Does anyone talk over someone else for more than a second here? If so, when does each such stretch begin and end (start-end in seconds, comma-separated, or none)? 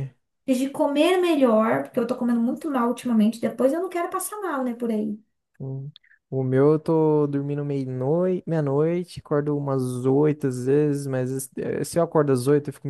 none